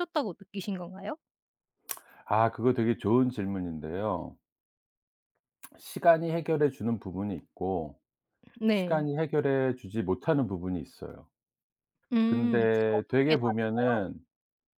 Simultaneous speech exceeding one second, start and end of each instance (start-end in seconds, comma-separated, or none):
12.2-14.0